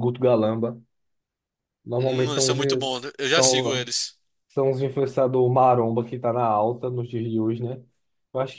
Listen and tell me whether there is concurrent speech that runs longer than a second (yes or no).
yes